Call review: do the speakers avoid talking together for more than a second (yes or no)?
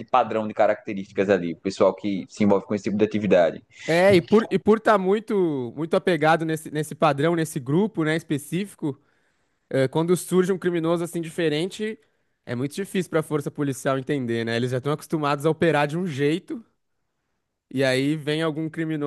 yes